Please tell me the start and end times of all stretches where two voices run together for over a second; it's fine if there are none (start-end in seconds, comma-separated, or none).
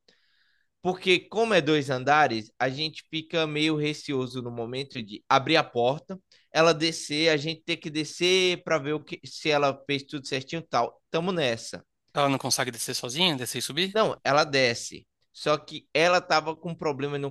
none